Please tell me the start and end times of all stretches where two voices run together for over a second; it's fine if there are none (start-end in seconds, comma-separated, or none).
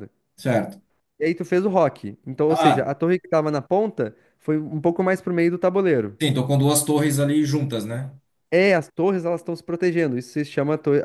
none